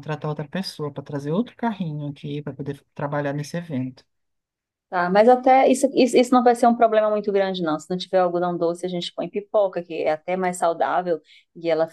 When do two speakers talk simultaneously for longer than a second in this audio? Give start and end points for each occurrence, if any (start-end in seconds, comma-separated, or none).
none